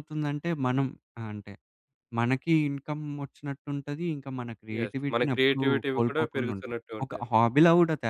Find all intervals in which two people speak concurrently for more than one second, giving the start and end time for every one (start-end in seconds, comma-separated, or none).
4.8-7.3